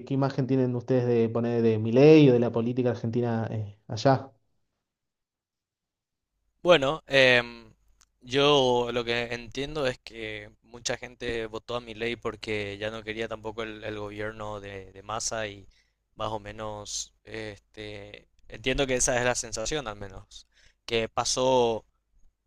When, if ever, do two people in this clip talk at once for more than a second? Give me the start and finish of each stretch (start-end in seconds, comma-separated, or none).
none